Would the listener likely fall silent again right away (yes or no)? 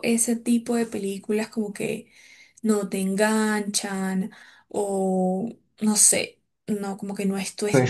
no